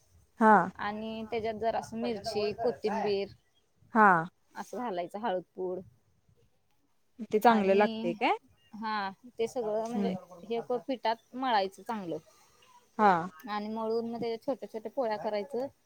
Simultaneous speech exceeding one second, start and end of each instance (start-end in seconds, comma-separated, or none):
none